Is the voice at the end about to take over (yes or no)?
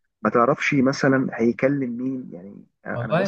yes